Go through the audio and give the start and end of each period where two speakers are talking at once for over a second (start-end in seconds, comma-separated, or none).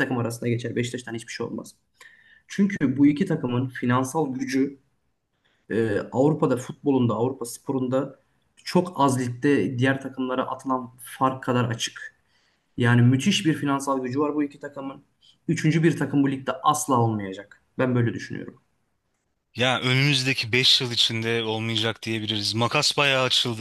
none